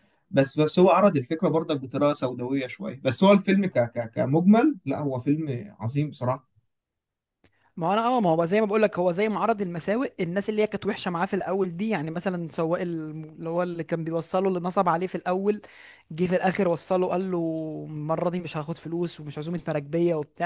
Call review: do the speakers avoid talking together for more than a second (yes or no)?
yes